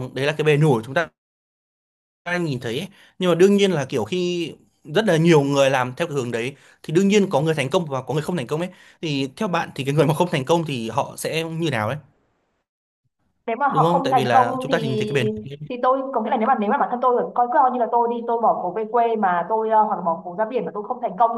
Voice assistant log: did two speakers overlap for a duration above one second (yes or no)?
yes